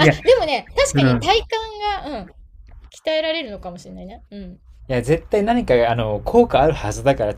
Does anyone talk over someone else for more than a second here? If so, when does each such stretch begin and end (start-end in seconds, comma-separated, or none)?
none